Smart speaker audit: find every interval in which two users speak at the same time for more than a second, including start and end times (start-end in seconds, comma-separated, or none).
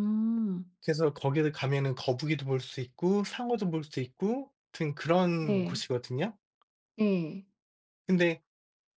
none